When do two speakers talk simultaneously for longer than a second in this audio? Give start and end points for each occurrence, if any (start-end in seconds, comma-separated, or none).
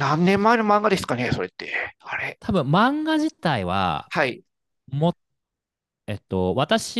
none